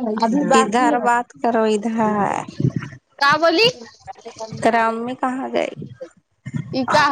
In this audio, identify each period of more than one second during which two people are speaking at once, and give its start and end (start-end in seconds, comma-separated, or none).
0.5-2.4